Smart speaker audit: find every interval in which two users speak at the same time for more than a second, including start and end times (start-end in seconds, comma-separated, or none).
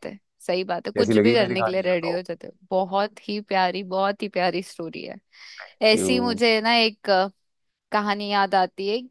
1.0-2.2